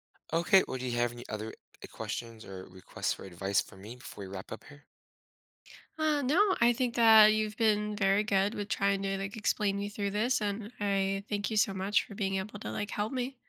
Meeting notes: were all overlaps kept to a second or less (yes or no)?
yes